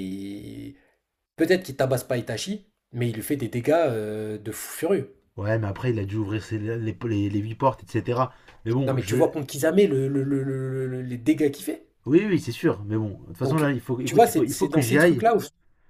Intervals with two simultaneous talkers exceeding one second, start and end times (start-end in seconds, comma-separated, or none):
13.4-15.3